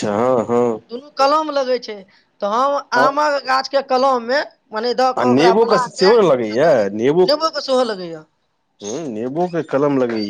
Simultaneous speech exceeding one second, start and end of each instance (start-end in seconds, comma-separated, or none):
5.2-6.7